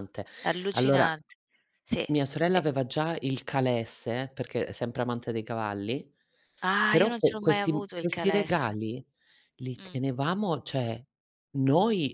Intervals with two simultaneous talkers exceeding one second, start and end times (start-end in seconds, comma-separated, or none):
6.9-8.8